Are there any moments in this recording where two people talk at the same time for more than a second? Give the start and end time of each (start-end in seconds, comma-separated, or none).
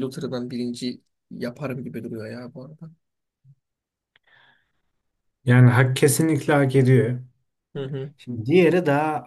none